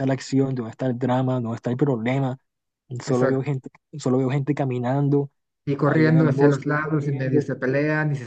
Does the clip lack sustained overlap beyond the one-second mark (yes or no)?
no